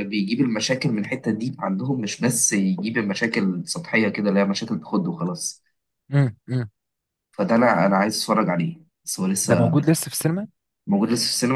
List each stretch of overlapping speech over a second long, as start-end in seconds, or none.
none